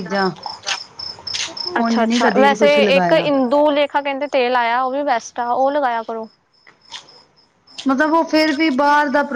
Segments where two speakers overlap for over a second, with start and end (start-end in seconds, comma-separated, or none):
1.8-3.3